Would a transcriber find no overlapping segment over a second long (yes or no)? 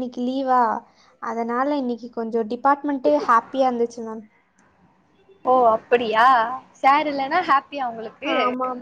yes